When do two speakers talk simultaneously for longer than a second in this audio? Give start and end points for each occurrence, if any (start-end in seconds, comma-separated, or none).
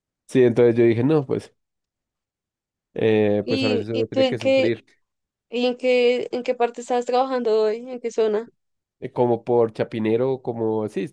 3.4-4.7